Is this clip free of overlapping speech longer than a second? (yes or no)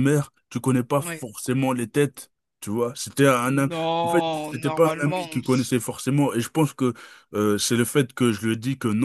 no